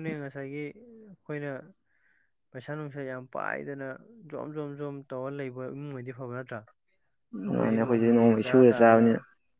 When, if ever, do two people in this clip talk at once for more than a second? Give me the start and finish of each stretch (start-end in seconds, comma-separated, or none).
7.5-9.1